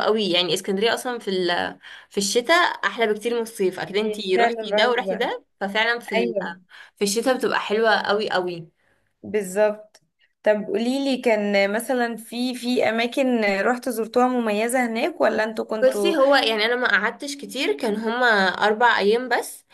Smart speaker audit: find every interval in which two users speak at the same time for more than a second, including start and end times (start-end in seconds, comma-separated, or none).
4.0-5.3